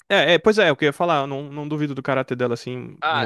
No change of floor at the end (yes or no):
no